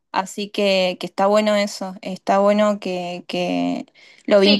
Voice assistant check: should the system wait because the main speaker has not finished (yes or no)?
no